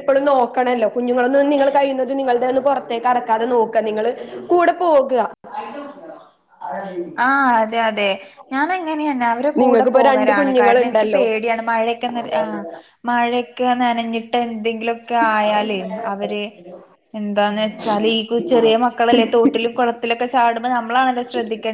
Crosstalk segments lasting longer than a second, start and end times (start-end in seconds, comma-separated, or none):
9.6-11.2